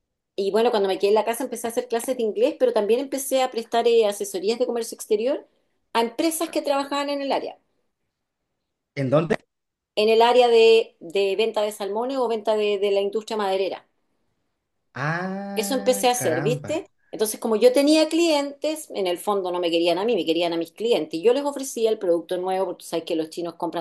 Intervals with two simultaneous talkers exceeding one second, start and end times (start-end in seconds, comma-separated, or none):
15.5-16.9